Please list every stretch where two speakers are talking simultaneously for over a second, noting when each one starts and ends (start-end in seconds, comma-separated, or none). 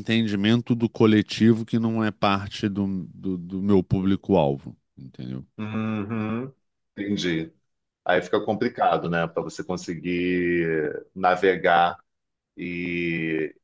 none